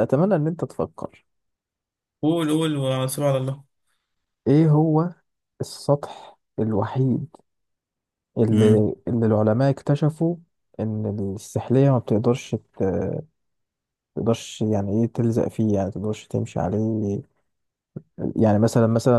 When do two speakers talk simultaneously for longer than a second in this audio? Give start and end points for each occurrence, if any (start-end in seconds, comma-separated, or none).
none